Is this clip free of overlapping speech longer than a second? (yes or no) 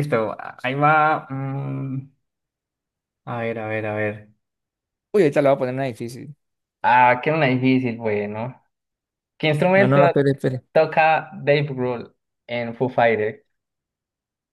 yes